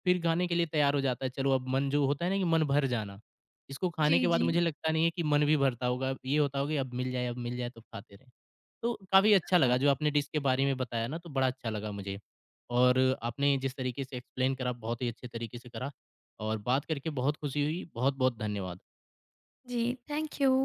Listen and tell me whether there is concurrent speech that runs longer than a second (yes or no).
no